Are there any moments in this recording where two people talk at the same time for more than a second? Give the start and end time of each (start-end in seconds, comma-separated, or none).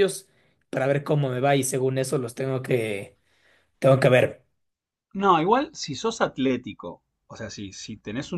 none